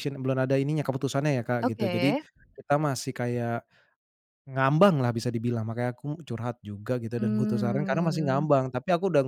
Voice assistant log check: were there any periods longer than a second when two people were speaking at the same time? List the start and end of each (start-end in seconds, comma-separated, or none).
7.2-8.5